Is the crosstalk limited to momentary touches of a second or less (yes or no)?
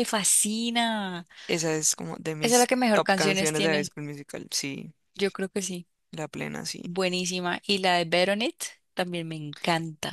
no